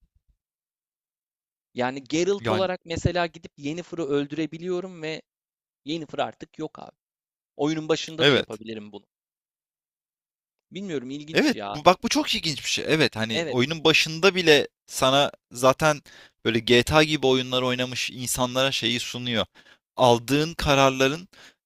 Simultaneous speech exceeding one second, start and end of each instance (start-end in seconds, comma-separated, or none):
none